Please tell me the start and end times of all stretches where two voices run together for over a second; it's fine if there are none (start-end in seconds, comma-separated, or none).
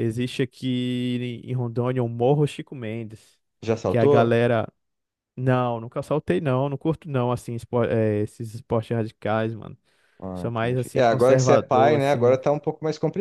10.3-12.4